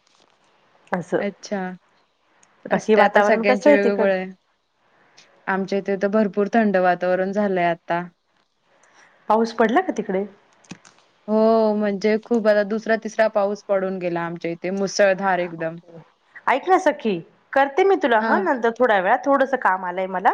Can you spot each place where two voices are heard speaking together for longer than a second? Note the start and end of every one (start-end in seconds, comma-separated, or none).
2.7-4.1